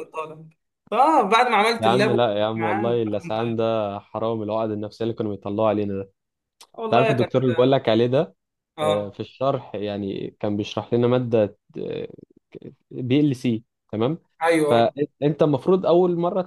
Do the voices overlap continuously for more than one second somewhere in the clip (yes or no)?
yes